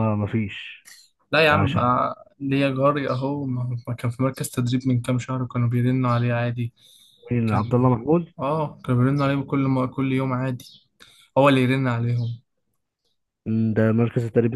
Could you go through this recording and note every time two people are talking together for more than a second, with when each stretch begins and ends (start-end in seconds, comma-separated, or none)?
none